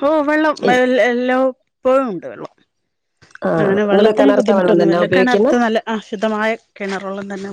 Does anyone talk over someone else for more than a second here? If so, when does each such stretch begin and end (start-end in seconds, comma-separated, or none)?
3.6-5.5